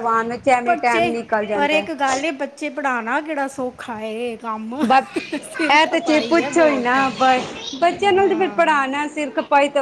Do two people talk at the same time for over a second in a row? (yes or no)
yes